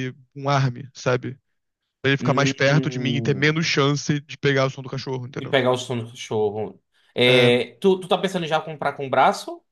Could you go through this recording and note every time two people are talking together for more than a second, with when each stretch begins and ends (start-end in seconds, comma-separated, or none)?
2.2-3.6